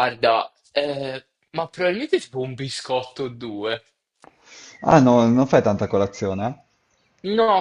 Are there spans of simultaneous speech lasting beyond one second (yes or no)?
no